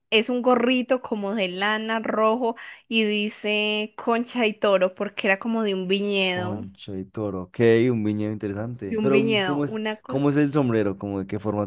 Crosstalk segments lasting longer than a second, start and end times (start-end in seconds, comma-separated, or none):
8.8-10.2